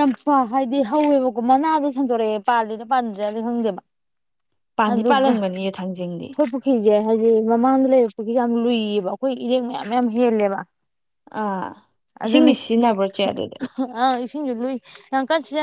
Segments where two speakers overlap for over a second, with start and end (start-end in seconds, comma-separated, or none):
4.9-6.3